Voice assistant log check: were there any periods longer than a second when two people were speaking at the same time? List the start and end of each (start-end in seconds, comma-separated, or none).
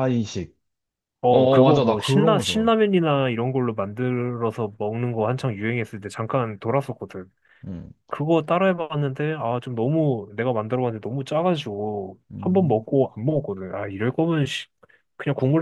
1.3-2.7